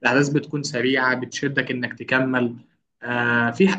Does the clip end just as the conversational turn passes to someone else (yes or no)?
no